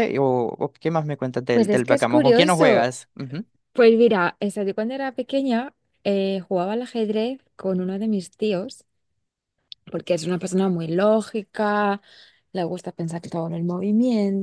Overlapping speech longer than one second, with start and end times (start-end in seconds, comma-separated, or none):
1.5-2.9